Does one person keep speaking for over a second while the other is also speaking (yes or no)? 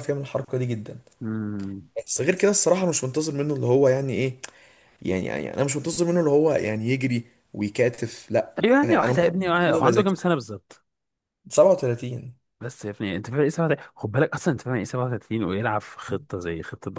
yes